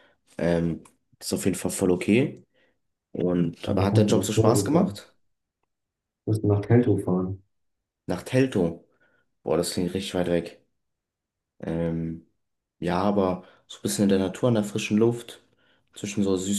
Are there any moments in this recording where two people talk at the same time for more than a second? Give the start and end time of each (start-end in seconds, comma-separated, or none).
3.6-5.0